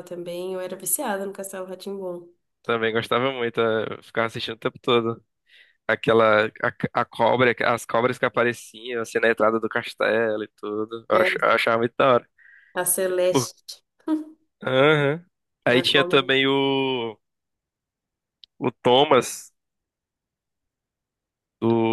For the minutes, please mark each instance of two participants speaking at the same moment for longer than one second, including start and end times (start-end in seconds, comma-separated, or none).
none